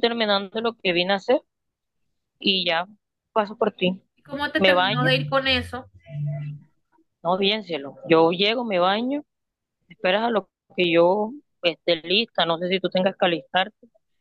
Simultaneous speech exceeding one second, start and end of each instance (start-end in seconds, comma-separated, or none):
none